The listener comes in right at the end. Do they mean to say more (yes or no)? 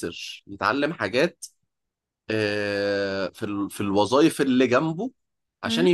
no